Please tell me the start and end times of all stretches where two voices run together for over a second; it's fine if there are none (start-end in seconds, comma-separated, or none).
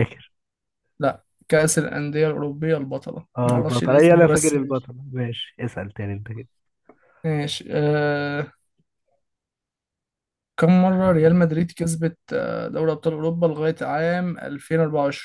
3.4-4.9